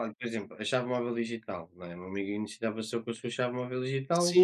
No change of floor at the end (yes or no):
no